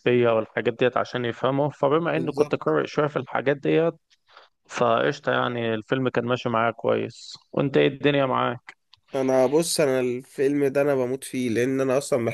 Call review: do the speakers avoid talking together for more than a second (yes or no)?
yes